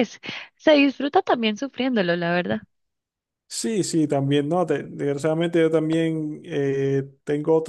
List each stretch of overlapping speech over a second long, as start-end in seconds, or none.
none